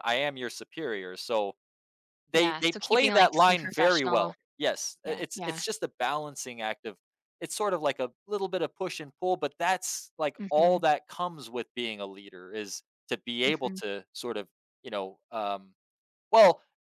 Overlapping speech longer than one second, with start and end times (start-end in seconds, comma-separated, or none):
2.3-4.3